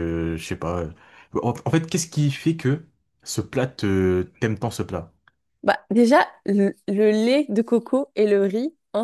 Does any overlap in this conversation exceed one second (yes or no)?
no